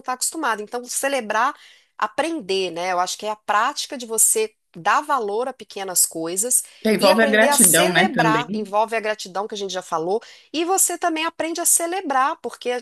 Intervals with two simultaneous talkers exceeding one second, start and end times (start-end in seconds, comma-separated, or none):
7.0-8.7